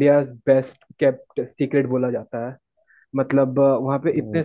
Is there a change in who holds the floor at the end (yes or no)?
no